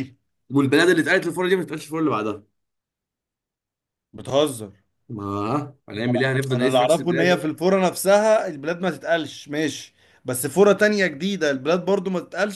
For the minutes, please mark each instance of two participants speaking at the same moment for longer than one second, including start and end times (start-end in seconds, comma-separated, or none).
6.1-7.5